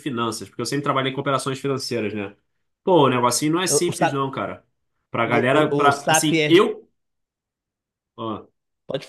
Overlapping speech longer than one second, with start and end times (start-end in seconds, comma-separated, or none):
5.2-6.6